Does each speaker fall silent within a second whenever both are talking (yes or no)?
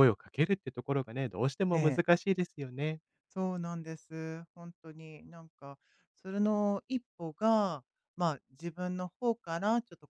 yes